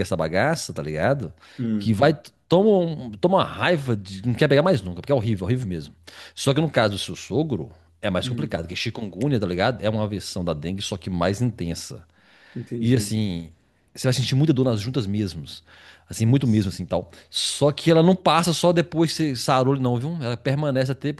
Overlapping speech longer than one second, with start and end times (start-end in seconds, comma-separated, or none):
none